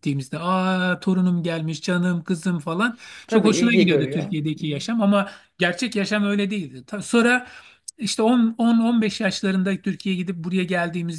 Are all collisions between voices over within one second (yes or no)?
no